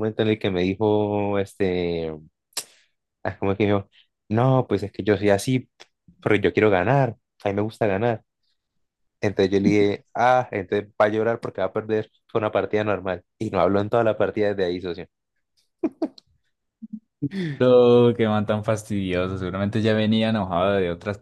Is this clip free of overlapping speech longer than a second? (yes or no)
yes